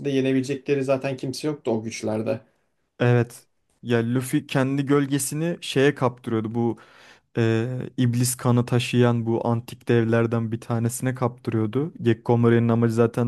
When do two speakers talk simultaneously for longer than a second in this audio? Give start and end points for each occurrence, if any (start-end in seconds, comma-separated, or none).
none